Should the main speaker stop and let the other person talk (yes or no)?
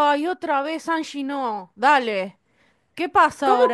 yes